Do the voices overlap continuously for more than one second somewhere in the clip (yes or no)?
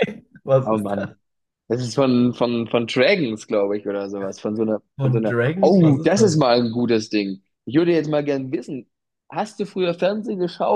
yes